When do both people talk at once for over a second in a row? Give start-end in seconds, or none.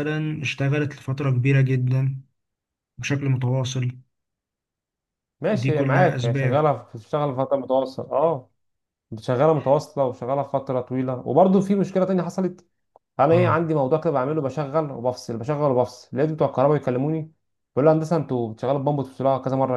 5.5-6.7